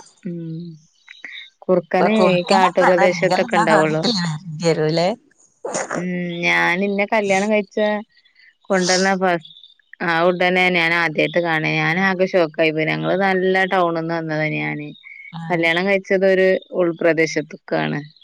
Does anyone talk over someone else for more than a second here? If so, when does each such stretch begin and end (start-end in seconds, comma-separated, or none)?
1.9-4.0